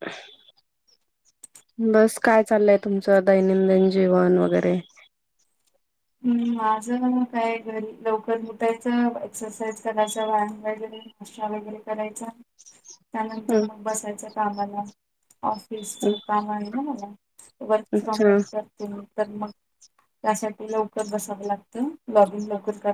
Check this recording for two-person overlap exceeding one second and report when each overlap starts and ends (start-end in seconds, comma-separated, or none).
none